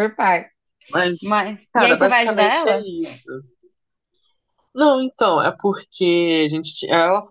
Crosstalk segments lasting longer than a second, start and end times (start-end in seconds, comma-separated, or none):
1.2-2.9